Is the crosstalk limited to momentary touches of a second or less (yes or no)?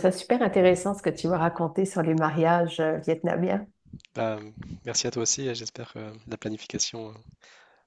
yes